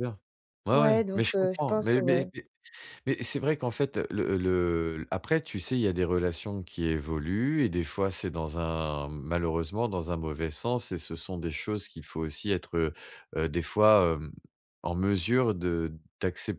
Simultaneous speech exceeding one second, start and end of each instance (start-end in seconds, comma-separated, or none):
0.7-2.3